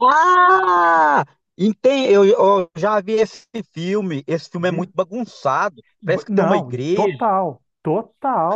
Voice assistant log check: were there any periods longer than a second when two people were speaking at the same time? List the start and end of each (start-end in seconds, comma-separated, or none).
6.0-7.3